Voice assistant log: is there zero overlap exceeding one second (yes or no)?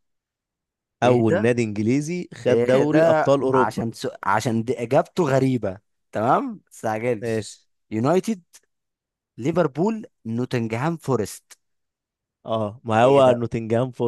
no